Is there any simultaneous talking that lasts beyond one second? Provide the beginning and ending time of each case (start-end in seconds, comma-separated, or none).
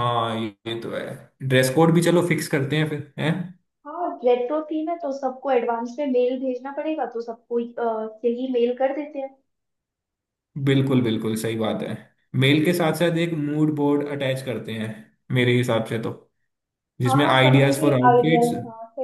17.1-18.5